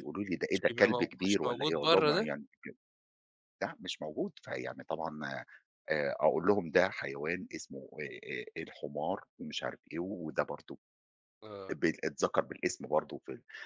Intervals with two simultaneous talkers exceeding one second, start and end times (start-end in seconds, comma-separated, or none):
0.5-2.3